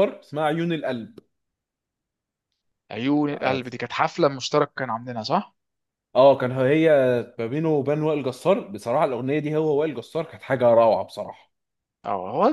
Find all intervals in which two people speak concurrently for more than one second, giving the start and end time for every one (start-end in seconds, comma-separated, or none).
none